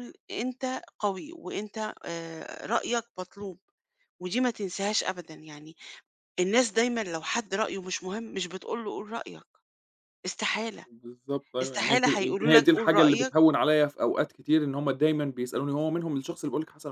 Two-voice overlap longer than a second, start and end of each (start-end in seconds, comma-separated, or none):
11.6-13.3